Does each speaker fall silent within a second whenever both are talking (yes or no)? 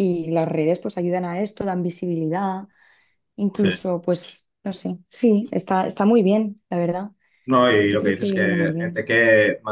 no